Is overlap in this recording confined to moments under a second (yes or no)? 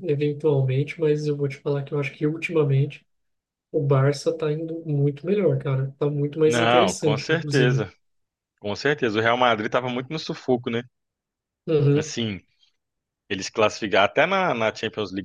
no